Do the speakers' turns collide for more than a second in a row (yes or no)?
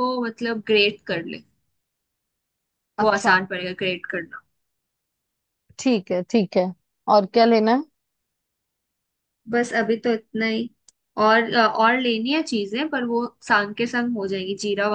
no